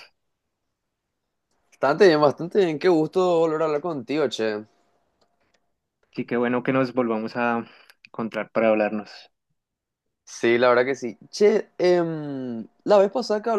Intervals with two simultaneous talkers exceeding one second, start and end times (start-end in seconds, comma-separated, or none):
none